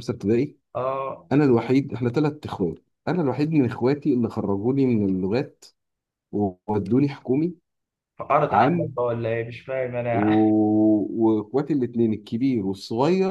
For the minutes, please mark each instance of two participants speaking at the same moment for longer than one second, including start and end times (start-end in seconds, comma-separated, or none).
none